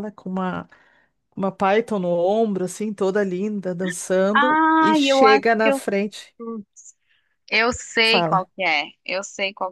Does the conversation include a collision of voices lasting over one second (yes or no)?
yes